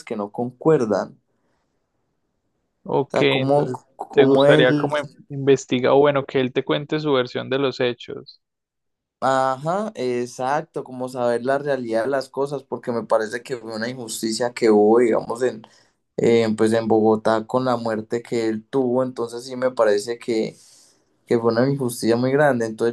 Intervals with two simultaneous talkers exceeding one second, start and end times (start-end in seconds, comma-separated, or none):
3.0-4.9